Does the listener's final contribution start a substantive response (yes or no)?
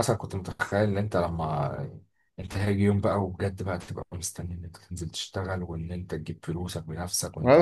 yes